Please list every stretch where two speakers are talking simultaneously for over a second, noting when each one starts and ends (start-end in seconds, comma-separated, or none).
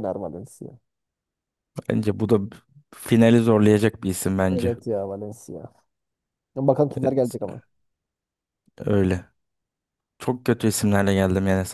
none